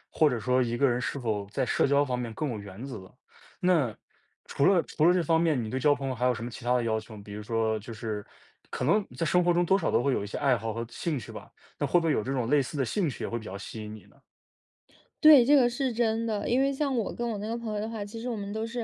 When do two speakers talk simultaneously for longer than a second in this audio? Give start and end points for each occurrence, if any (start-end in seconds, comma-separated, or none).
none